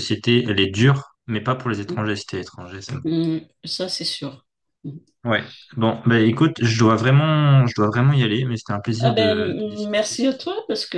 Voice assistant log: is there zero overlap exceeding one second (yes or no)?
no